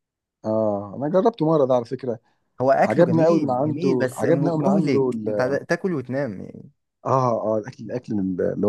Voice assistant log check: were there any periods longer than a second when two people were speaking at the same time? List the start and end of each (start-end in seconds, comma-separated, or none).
2.7-5.6